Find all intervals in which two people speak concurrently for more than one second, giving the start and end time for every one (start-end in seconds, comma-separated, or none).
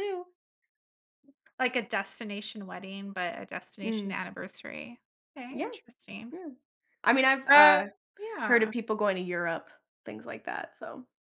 none